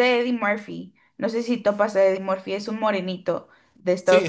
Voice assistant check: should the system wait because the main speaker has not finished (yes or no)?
no